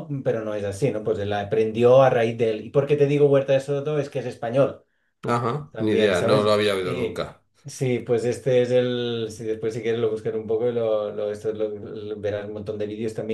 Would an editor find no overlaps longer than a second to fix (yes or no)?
no